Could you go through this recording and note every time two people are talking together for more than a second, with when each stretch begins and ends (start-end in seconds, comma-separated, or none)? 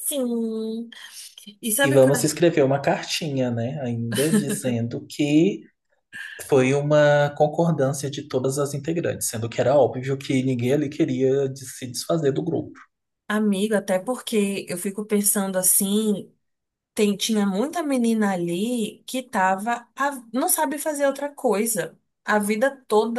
none